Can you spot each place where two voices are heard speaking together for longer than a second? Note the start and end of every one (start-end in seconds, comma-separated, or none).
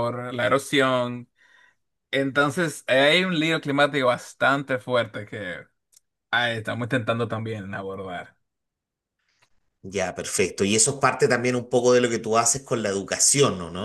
none